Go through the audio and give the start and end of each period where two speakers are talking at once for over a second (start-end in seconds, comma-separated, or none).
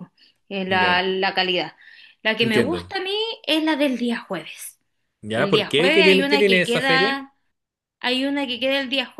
5.3-7.2